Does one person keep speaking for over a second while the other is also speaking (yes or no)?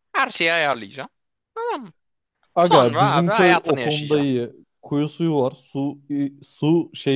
yes